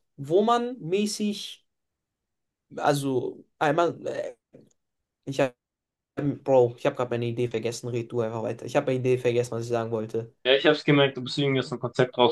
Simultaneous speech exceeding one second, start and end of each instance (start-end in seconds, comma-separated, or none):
none